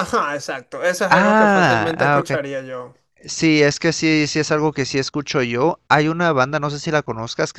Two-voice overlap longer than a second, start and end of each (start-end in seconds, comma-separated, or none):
1.1-2.4